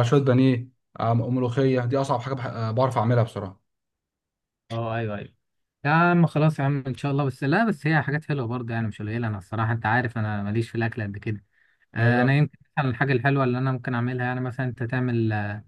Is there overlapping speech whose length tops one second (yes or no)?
no